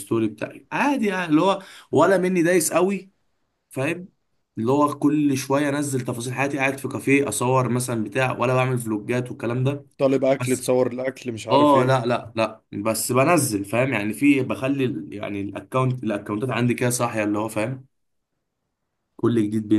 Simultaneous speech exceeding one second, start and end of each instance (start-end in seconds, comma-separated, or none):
none